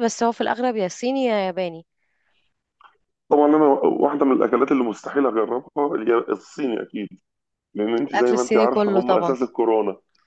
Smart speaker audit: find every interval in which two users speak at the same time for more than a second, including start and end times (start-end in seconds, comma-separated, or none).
8.1-9.3